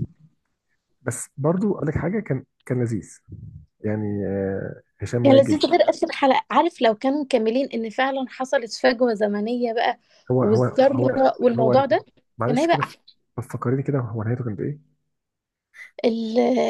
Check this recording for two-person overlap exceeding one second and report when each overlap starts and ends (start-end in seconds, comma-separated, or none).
10.4-11.8